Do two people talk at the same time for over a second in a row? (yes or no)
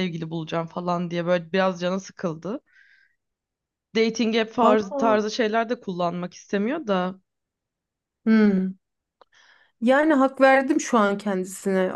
no